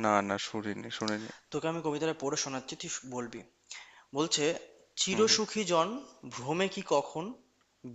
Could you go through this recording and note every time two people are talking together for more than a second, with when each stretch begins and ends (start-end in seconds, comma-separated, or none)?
none